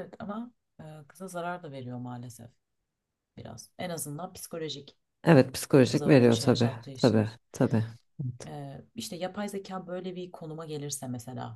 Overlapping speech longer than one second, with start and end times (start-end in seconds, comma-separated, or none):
5.9-7.3